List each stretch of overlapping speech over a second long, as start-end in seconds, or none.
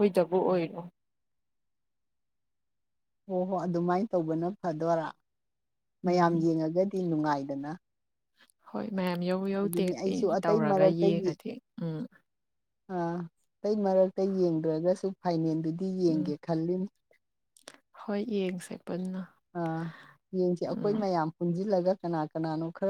9.6-11.2